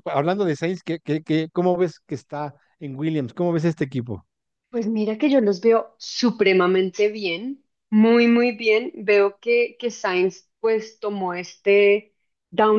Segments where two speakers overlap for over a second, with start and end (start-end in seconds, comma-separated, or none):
none